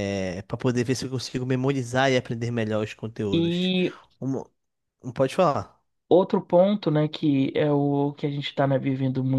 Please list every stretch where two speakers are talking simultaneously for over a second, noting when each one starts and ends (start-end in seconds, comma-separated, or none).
none